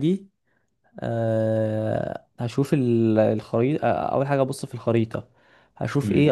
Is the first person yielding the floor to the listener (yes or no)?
yes